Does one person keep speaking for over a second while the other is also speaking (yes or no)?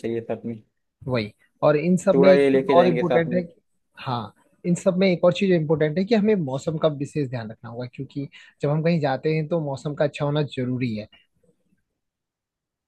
yes